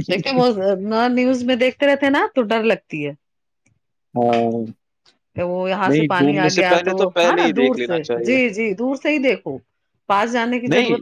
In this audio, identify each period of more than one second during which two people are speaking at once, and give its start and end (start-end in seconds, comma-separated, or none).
5.9-8.4